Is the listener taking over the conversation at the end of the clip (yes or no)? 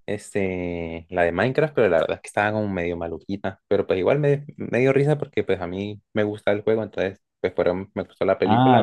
yes